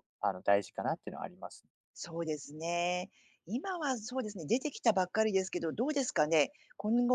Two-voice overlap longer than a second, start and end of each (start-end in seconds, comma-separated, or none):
none